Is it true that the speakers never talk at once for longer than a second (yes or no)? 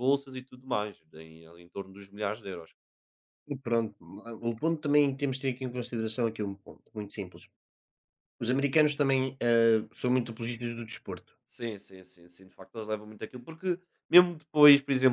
yes